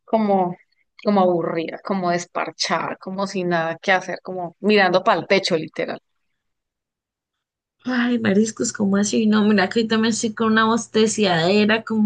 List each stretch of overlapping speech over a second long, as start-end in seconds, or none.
none